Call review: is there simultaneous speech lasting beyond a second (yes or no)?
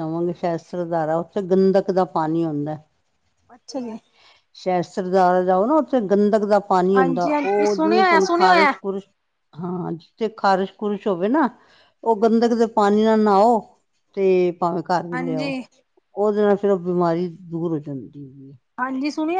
yes